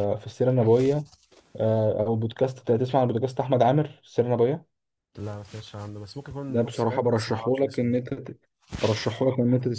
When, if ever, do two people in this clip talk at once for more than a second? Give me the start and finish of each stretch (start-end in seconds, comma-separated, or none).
6.5-7.9